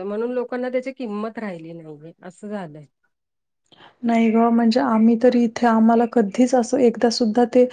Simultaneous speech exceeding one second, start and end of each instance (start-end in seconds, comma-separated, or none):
none